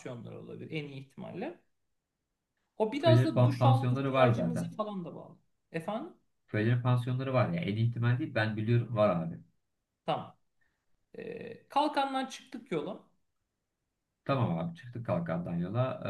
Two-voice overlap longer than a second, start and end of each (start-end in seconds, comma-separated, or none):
3.0-4.8